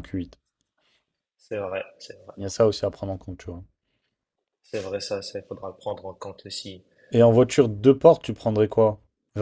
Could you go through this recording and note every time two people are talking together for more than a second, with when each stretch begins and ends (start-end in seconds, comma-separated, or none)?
none